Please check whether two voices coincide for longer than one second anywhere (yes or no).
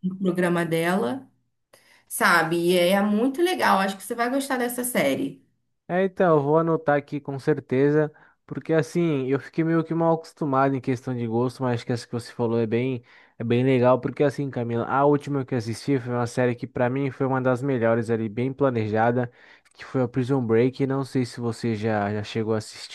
no